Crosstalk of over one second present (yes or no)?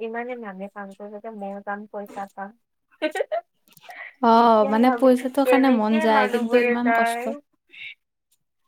yes